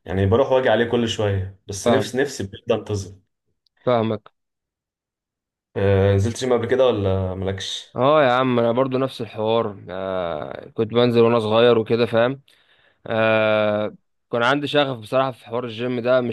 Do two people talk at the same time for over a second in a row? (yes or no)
no